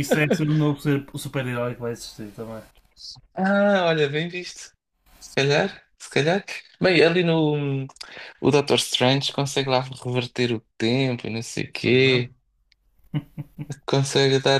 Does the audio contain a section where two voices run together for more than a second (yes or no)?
no